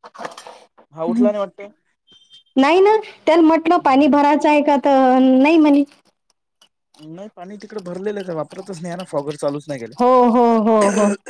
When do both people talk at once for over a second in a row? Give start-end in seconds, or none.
none